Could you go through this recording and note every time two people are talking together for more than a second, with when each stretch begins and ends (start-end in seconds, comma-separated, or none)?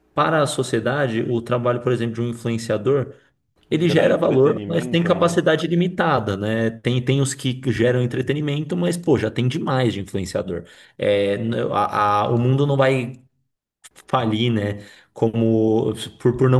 3.8-5.4